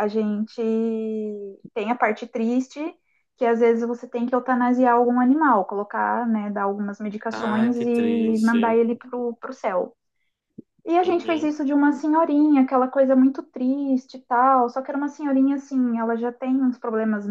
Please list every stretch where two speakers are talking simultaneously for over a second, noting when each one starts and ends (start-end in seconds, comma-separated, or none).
7.3-8.8